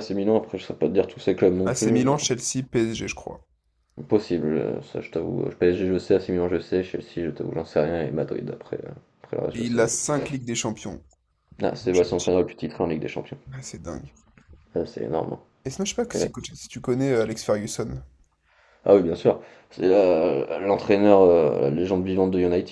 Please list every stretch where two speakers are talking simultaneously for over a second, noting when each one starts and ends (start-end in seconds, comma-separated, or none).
none